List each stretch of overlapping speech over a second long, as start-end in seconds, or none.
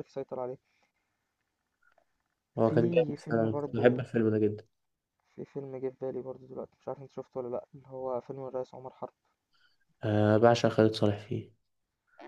2.6-4.0